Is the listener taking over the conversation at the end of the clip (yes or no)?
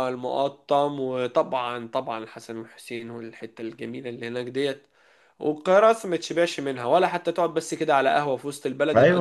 yes